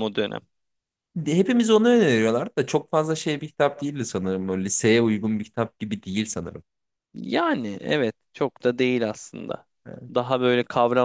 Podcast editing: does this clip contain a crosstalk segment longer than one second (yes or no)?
no